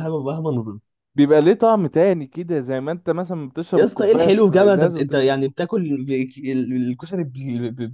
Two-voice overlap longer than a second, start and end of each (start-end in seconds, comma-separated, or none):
3.8-5.4